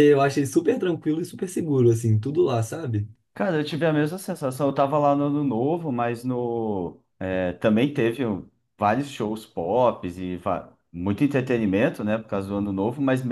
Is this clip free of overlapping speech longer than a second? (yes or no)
yes